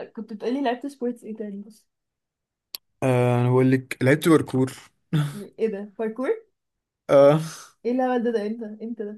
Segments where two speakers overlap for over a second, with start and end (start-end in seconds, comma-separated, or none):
none